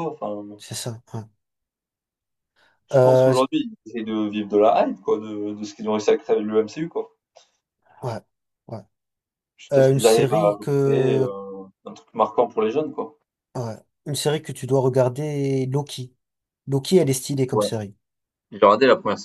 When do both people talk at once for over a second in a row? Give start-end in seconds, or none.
9.7-11.3